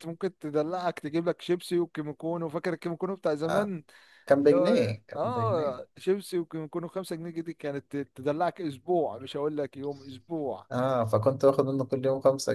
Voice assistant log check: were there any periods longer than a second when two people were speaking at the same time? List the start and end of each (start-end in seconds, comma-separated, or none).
4.4-5.8